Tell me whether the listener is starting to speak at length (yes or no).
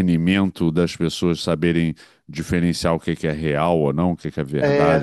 yes